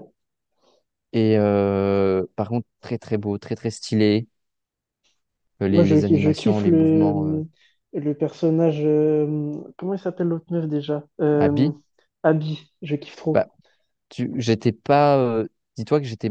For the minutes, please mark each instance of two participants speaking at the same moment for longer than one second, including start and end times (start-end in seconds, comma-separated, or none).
5.7-7.4